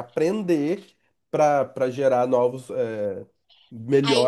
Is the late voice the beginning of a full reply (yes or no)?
yes